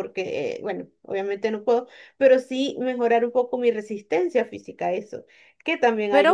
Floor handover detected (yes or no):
yes